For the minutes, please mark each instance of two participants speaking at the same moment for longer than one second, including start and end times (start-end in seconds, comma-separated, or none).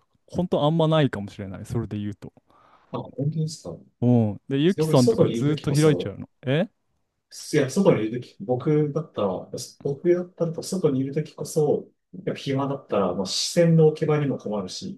4.8-6.2